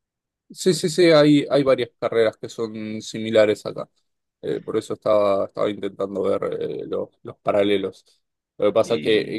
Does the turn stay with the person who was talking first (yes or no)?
yes